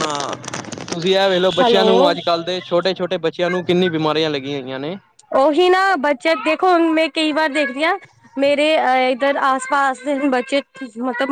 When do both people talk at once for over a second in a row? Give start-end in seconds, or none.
none